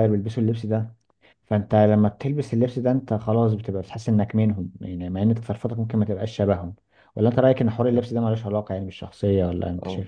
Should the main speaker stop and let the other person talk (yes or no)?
yes